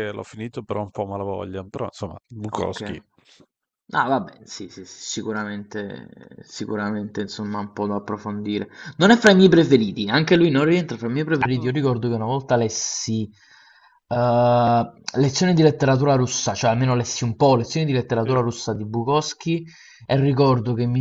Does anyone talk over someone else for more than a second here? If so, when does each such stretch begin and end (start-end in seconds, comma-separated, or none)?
none